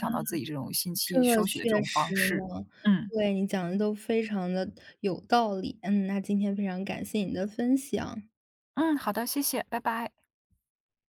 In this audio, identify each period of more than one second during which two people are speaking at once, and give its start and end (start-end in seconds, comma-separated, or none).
1.0-2.5